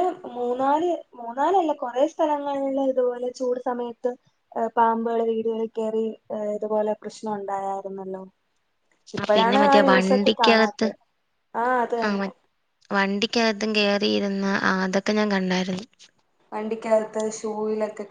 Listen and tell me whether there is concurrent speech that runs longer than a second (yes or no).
yes